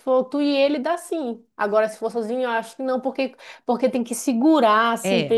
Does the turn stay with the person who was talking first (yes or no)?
yes